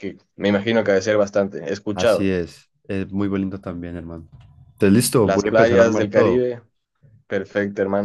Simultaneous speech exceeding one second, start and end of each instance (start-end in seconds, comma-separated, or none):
5.2-6.4